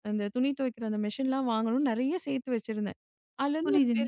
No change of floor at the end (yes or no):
yes